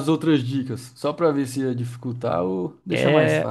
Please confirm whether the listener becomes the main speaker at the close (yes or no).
yes